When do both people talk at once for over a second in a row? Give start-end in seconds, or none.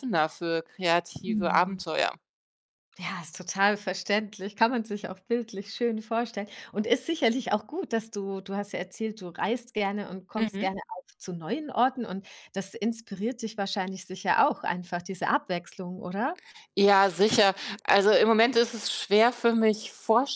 none